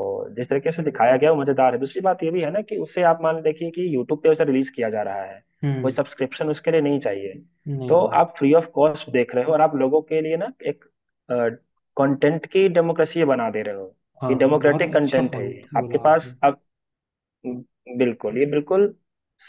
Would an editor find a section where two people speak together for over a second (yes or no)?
yes